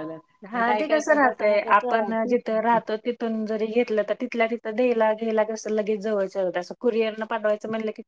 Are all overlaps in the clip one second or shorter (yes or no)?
no